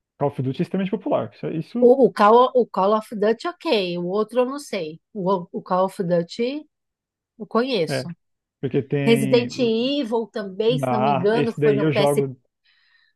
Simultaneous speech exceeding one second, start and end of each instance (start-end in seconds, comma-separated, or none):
10.8-12.3